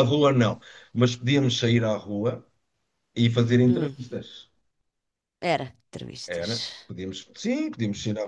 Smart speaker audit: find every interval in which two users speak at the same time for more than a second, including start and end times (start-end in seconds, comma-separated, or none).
none